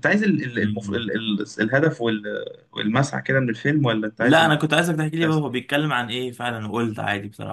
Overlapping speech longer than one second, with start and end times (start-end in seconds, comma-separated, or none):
4.2-5.4